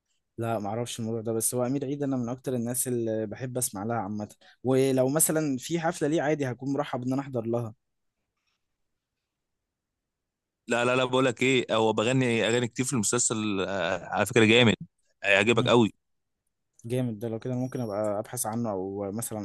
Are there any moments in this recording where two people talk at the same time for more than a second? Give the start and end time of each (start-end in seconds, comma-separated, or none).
none